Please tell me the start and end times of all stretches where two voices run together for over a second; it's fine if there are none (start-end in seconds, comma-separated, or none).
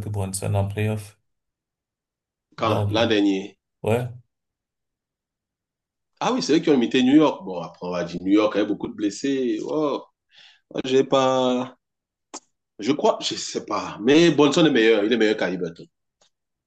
none